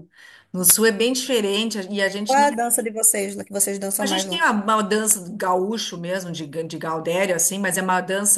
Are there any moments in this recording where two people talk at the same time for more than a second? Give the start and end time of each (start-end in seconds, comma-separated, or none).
none